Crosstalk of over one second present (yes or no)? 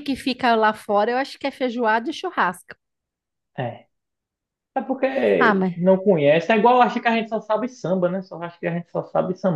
no